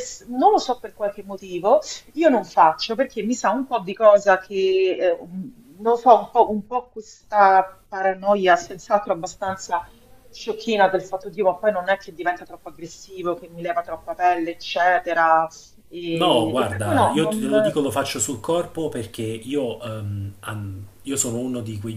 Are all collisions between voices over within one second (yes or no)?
no